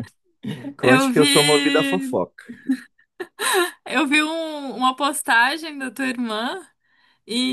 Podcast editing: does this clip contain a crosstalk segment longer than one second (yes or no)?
yes